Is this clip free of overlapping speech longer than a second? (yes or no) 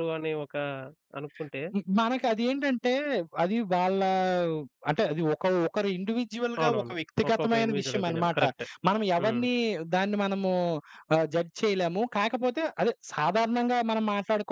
no